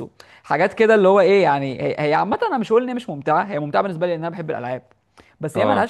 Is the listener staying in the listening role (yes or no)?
yes